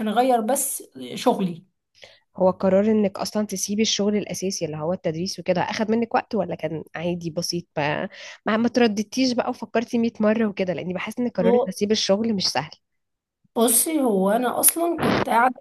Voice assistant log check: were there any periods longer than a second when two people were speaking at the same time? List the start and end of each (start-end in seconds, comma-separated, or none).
none